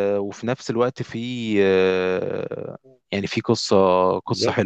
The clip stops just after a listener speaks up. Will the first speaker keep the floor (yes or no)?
no